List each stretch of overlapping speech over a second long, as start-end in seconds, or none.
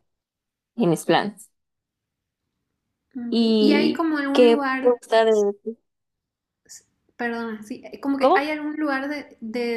3.3-5.3